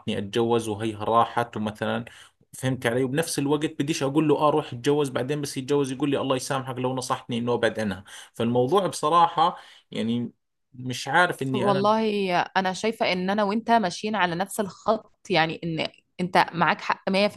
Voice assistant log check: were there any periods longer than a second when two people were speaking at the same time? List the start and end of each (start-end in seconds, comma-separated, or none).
none